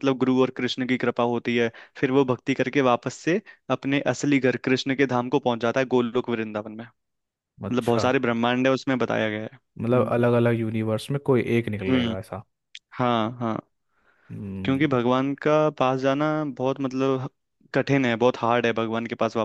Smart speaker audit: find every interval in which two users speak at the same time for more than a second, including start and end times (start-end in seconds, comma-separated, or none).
none